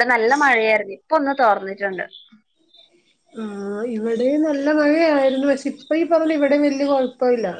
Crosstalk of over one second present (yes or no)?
no